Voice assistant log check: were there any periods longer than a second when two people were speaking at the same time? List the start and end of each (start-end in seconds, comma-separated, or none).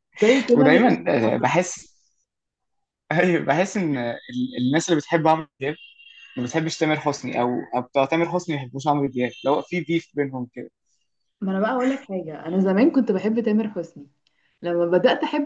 0.6-1.8